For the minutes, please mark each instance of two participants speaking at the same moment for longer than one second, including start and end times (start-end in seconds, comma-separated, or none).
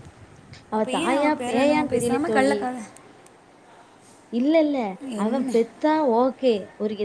0.8-2.6